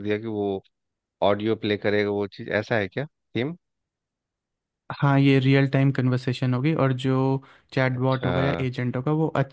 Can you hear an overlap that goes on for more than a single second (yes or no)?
no